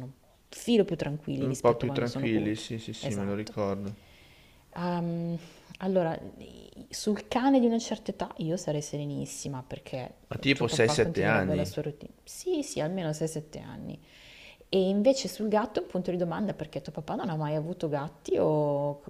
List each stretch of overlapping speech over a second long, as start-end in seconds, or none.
1.4-3.6, 10.5-11.8